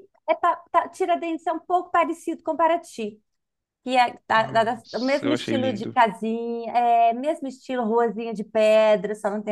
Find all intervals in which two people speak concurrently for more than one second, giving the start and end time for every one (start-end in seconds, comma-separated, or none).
4.3-6.0